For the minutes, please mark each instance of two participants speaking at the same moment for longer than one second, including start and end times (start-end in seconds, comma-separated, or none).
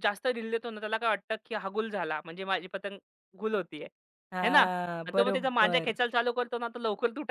4.4-6.0